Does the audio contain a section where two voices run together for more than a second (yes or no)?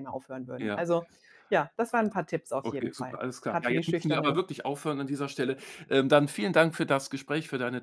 yes